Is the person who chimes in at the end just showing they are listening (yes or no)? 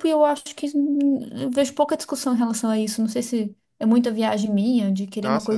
yes